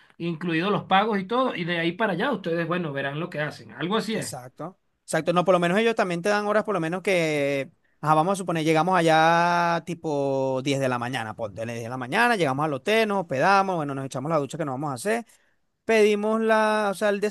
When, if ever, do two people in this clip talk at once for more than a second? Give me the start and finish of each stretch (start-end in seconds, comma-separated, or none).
none